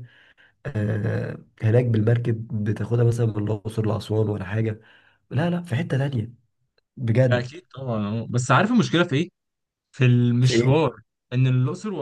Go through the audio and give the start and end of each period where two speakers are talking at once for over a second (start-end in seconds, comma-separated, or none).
none